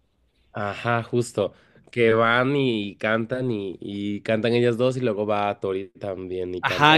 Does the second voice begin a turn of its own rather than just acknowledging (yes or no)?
yes